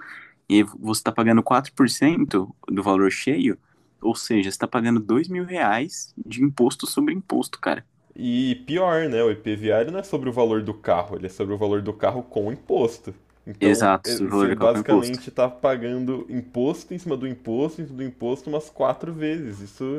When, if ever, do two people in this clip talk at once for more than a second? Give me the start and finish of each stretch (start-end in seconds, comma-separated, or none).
13.6-15.2